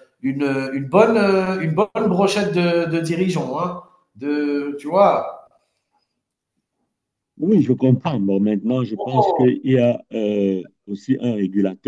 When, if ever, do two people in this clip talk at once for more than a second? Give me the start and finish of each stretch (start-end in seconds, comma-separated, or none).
none